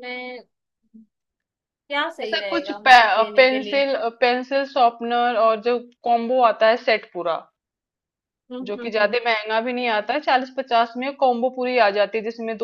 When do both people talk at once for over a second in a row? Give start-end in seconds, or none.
2.2-3.9